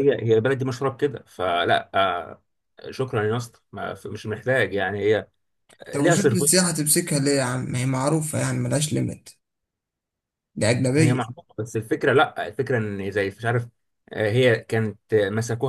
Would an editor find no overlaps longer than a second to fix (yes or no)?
yes